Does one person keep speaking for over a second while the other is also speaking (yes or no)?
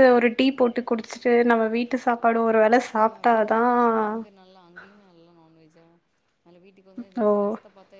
no